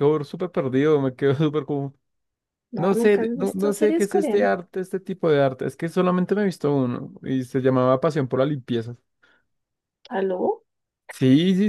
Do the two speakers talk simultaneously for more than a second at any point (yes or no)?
yes